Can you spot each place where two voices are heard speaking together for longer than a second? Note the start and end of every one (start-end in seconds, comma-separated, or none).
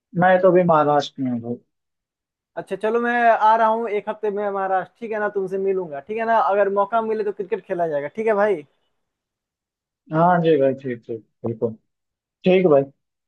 none